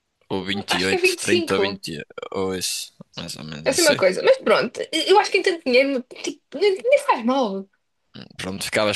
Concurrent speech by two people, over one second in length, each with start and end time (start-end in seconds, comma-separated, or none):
0.5-1.8